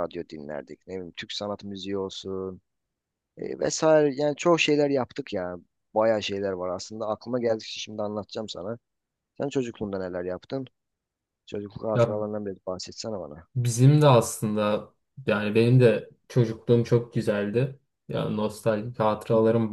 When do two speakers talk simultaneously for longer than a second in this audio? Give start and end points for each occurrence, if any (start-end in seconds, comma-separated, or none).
none